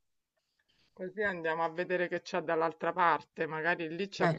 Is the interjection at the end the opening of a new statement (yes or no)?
no